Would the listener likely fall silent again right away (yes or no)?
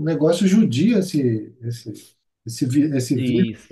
no